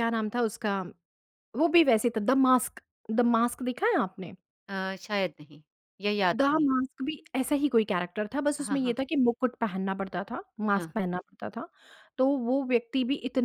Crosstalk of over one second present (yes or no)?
no